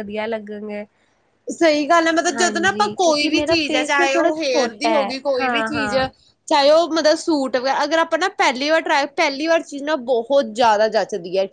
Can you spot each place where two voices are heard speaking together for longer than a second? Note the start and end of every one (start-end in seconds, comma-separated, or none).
2.3-6.0